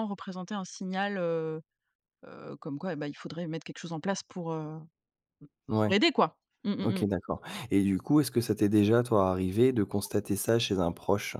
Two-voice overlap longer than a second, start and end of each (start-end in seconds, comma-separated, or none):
none